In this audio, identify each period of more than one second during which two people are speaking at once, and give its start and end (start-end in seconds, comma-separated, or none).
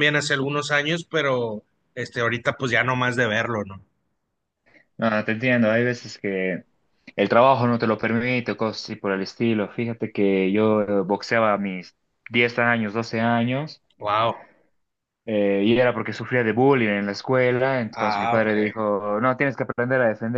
none